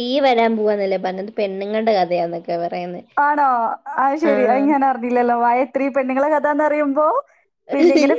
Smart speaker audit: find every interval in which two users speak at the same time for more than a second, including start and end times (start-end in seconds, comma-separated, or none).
none